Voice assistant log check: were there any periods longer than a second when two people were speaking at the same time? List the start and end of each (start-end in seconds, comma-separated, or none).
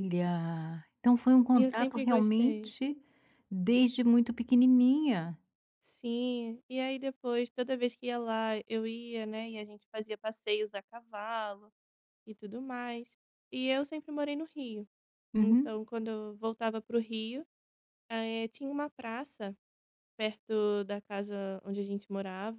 1.5-2.7